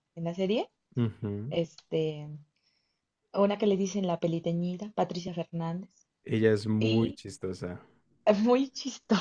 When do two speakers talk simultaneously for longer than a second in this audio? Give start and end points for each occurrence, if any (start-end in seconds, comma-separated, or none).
none